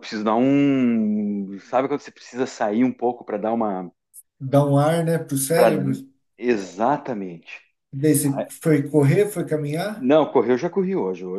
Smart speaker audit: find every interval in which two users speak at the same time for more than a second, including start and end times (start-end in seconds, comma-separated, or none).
none